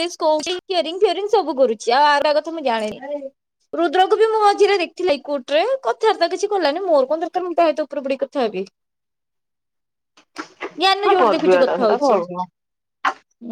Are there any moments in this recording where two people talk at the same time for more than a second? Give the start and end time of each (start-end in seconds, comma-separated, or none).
10.9-12.2